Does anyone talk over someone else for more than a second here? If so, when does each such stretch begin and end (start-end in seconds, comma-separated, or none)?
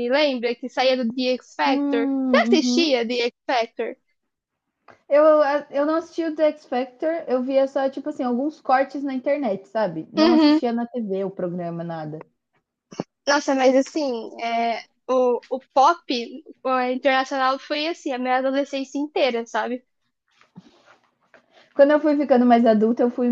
1.6-3.0